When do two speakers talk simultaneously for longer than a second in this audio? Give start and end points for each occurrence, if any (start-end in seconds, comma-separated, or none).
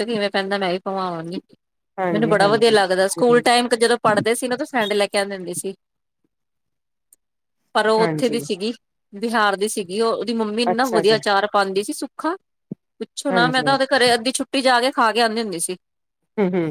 2.1-3.4